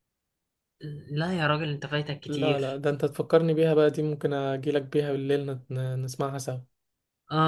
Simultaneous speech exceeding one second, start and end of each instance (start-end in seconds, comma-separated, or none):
none